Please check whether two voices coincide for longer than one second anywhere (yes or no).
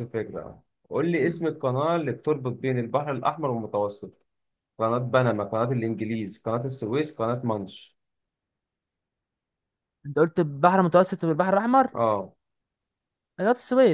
no